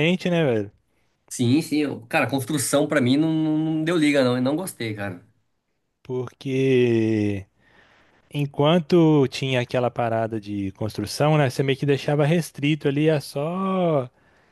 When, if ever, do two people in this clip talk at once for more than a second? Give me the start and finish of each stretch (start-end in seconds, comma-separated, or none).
none